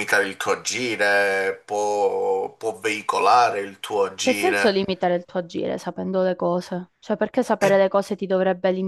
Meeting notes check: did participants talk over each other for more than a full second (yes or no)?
no